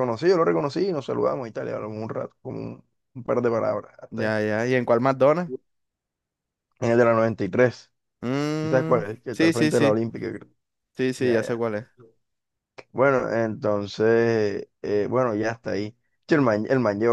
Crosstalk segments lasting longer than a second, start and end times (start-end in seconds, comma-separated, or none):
8.6-10.0